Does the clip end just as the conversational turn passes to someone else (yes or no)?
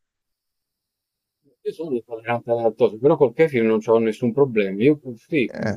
no